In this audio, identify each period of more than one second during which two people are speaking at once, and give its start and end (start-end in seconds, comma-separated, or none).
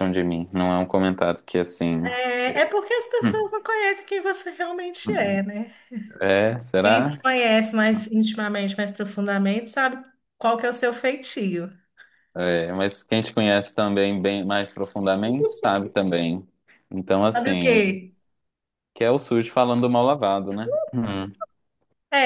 none